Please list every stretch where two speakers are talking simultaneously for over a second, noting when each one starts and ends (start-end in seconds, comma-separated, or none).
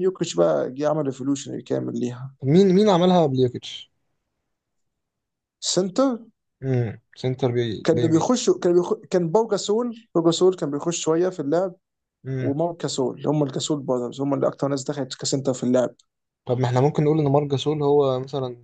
none